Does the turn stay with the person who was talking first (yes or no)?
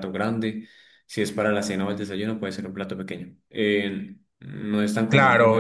no